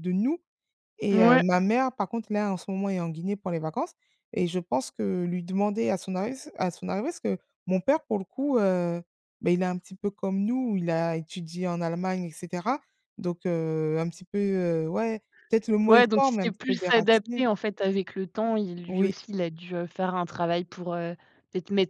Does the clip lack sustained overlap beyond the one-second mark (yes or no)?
no